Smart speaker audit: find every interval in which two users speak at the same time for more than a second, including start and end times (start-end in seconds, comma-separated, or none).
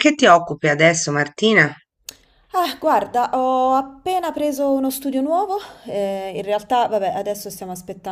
none